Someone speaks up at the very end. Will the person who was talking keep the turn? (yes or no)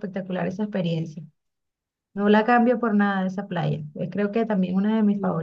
no